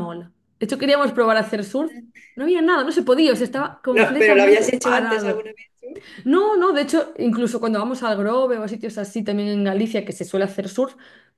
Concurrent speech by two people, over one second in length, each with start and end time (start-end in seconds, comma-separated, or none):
3.9-5.4